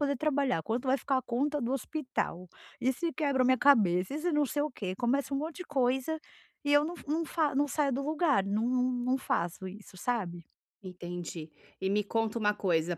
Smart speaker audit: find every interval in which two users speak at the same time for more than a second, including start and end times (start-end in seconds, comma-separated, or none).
none